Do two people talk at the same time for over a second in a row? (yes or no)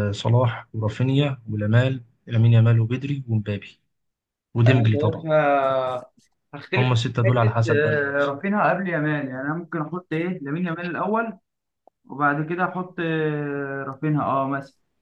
yes